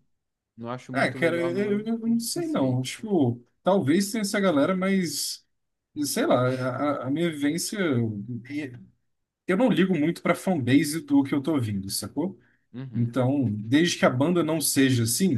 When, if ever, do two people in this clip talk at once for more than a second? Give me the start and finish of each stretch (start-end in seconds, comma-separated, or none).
0.9-2.8